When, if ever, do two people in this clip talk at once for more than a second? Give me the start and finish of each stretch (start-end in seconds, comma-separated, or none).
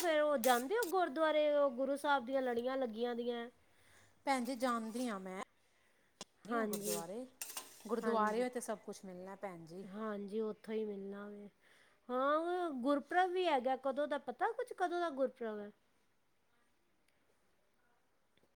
none